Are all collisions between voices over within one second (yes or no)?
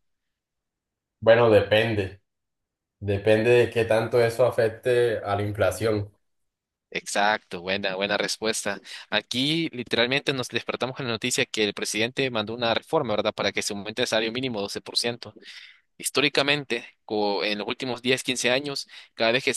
yes